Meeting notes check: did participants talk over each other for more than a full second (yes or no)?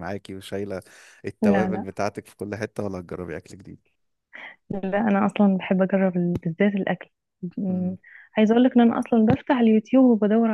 no